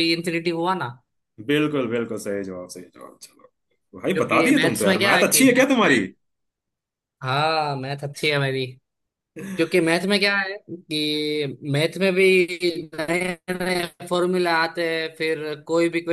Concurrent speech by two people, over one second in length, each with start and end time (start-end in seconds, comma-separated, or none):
4.1-6.0